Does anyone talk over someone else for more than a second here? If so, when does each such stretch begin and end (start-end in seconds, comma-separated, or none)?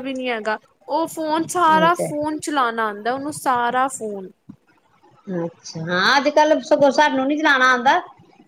none